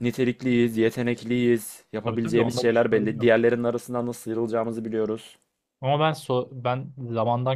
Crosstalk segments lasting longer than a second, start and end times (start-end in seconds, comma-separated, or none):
2.0-3.3